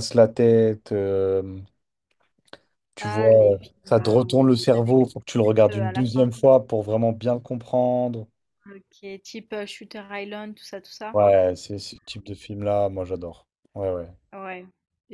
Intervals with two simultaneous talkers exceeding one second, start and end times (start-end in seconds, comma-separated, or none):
3.0-5.0